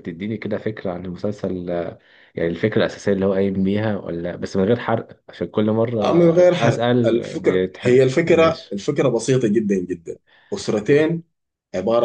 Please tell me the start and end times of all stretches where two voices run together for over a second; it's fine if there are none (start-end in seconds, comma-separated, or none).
6.7-8.8